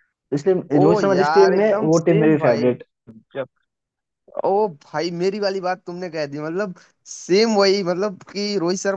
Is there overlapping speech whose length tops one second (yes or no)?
yes